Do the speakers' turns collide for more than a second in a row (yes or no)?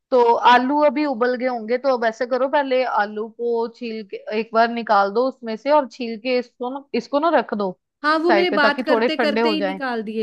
yes